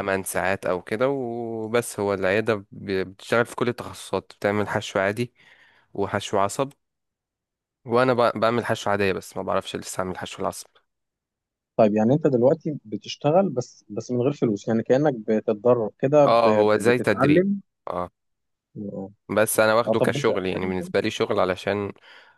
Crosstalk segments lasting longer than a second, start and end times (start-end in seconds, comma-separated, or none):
16.2-17.5